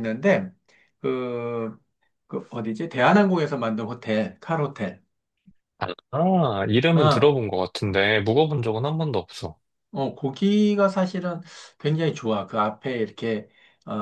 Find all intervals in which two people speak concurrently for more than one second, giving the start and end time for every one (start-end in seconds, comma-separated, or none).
none